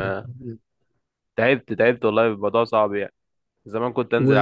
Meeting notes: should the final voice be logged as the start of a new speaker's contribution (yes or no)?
no